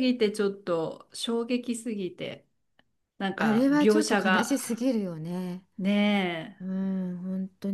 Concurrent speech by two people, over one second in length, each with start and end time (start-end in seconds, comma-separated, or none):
3.4-4.6